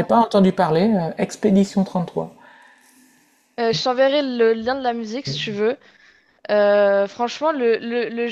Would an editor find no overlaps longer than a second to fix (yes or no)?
yes